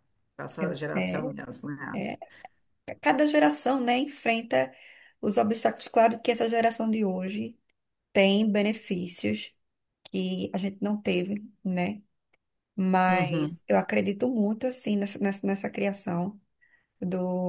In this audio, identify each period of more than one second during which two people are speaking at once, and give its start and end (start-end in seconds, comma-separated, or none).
none